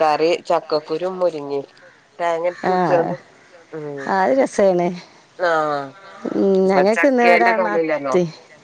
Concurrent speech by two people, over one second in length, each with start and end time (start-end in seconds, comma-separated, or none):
6.7-8.1